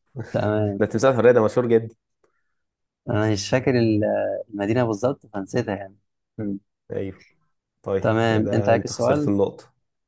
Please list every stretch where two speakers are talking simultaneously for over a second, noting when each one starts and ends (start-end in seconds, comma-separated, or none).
8.0-9.3